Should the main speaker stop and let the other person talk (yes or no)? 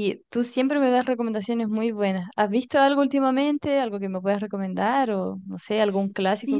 yes